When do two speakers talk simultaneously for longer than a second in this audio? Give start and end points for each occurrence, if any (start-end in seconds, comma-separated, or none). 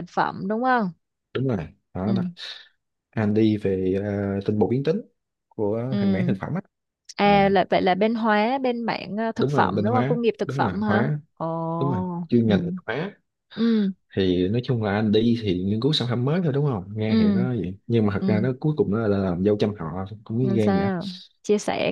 9.4-11.2